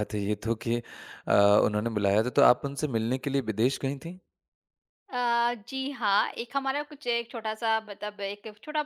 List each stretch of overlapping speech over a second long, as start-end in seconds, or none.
none